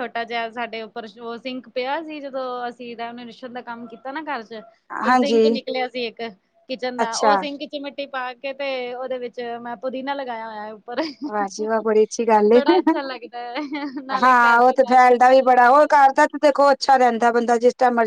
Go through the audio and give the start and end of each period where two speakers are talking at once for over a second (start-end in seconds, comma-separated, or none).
14.2-15.9